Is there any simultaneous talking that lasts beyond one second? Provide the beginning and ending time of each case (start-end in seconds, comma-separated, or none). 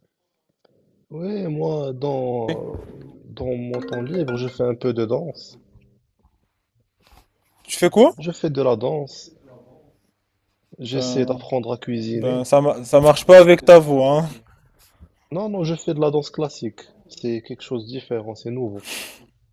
none